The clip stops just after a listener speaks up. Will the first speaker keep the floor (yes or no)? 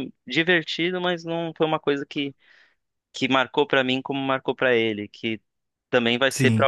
yes